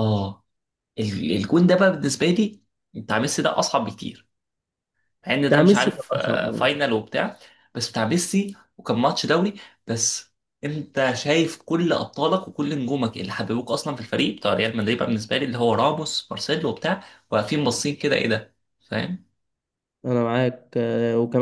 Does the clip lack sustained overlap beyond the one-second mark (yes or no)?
no